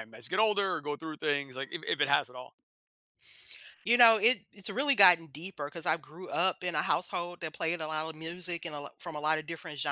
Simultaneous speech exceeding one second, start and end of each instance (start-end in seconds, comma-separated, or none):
none